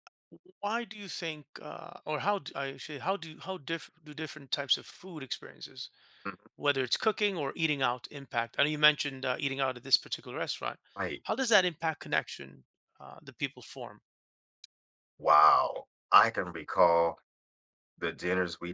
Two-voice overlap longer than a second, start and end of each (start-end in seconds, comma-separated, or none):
none